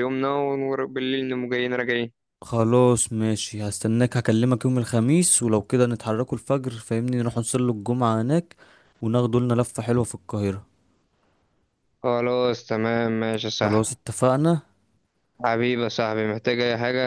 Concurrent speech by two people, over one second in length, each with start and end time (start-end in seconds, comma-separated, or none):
none